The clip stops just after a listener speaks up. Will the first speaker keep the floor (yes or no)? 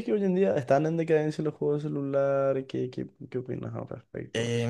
no